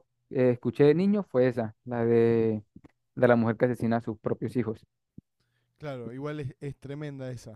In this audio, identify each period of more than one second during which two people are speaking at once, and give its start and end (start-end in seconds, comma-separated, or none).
none